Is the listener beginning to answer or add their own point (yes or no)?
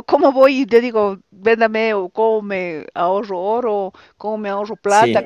no